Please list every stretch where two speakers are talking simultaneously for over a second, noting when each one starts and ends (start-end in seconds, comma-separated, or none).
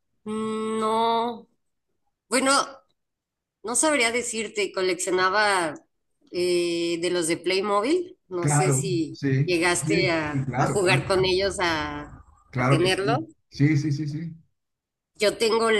8.4-11.1